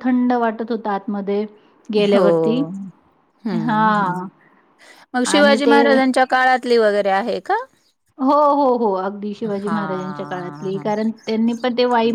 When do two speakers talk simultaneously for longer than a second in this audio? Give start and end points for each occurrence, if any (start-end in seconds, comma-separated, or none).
9.6-10.8